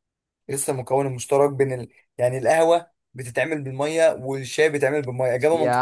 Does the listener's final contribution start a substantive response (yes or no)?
yes